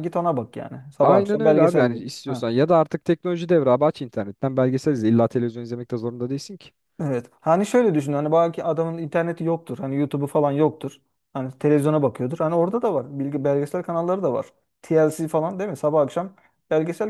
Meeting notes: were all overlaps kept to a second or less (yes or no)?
no